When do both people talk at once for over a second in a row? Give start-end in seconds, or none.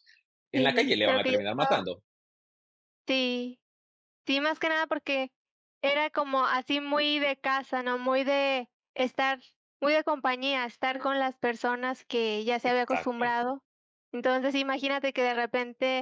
0.5-1.8